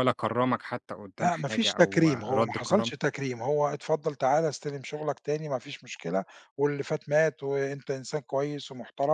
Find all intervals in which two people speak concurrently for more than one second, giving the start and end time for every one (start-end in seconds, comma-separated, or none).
1.2-2.9